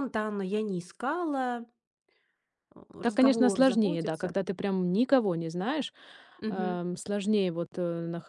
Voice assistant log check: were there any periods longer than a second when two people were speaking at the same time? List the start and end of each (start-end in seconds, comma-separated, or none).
3.0-4.3